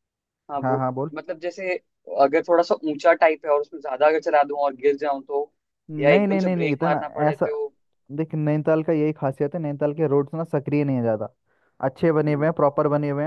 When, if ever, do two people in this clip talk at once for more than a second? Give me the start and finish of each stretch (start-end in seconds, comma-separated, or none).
6.0-7.5